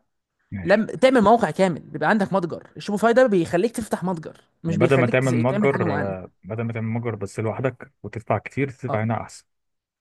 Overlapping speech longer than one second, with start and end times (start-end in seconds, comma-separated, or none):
4.7-6.1